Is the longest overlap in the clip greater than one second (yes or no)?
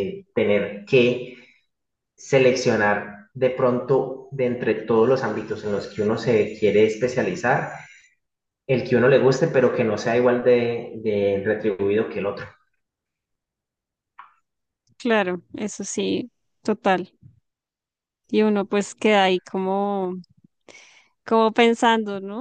no